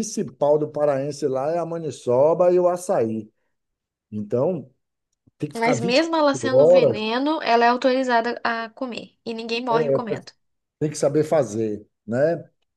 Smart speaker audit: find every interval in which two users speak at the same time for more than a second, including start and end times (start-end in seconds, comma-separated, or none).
5.5-7.0